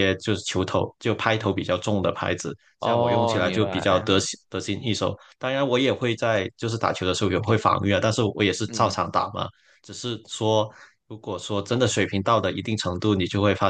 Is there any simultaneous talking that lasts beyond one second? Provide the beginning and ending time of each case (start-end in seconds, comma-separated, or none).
2.8-4.1